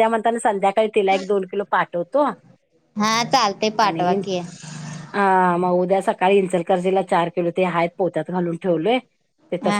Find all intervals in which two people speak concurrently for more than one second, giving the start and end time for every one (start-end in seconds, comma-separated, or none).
none